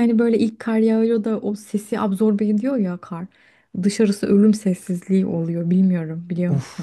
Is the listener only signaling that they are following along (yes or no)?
no